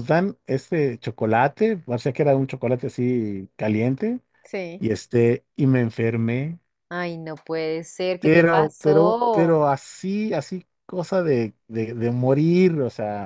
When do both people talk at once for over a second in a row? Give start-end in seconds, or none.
8.2-9.7